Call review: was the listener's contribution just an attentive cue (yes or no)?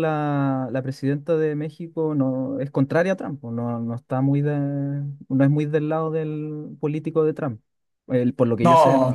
no